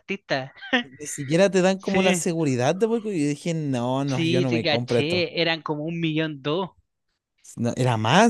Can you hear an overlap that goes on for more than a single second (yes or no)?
yes